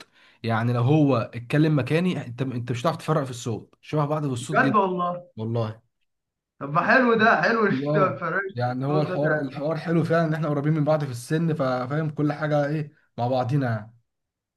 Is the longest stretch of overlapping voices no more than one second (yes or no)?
no